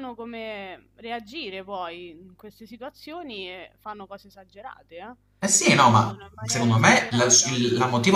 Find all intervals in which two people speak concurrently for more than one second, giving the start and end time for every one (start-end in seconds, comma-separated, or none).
5.7-7.6